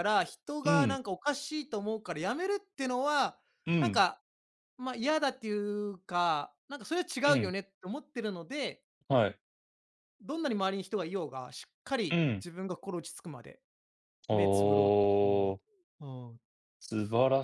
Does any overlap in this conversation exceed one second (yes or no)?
no